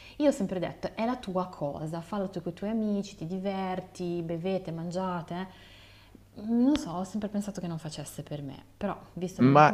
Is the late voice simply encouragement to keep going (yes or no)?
no